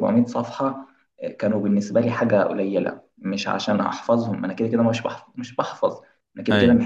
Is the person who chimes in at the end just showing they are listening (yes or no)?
yes